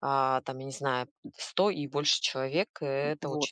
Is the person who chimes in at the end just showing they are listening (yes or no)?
no